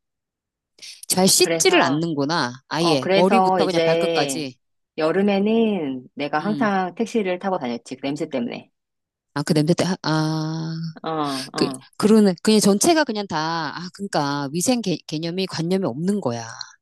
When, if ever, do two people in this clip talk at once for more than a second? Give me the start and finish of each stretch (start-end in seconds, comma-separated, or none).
2.8-4.4